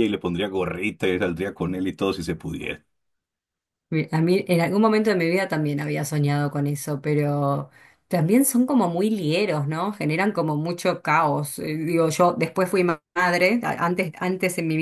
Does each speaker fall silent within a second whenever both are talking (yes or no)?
yes